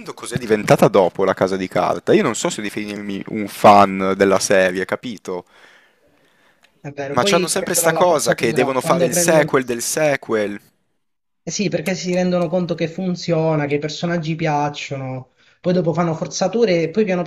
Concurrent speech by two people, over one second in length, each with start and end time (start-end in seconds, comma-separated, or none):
7.1-9.5